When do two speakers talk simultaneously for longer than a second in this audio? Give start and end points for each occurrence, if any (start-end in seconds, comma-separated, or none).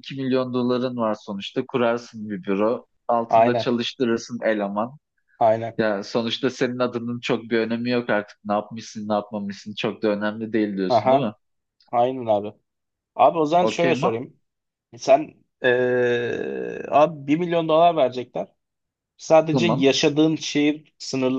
none